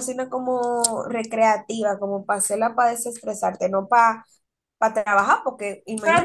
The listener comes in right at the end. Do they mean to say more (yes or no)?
yes